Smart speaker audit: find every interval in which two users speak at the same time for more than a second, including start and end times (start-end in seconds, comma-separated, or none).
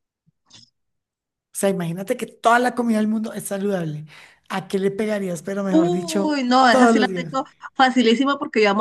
5.7-7.3